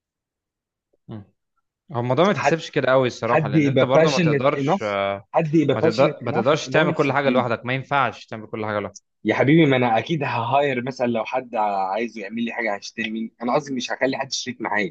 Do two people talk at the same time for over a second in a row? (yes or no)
yes